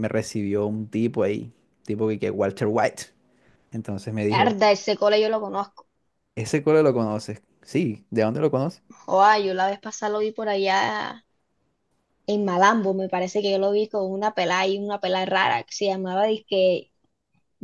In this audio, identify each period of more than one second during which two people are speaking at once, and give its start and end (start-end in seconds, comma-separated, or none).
none